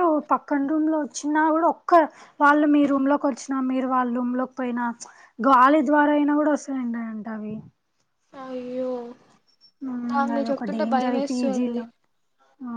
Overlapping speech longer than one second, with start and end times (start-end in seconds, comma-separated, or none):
10.4-11.8